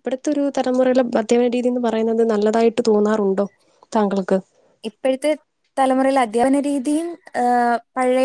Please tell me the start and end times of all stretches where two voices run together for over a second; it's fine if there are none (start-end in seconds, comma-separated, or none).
none